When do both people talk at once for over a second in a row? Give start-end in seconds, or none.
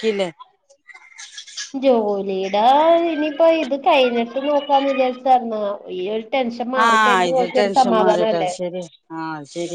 6.9-8.5